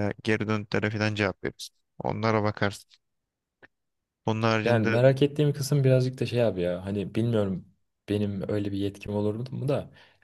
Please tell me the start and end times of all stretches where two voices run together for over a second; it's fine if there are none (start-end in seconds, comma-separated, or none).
none